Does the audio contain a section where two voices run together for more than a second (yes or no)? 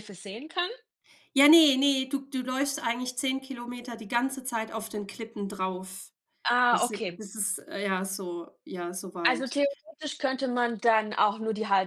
no